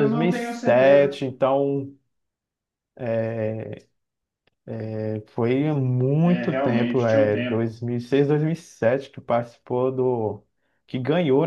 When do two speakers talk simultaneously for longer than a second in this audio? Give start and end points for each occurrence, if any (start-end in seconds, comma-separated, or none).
6.2-7.8